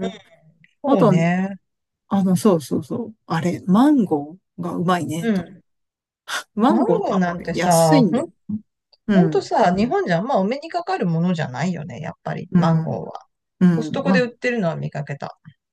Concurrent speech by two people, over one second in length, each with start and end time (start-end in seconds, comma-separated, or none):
6.7-8.2